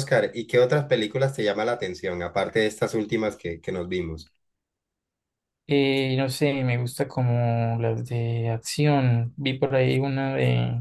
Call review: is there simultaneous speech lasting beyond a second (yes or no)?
no